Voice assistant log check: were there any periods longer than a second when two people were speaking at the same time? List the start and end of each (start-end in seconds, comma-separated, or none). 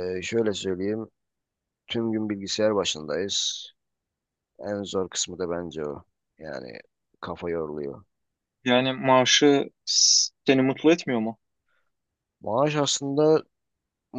none